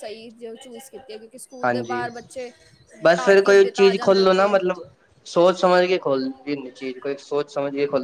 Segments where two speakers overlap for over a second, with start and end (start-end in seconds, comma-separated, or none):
3.1-4.5